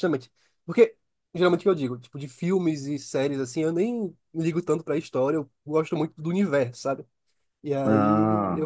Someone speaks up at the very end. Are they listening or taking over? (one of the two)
listening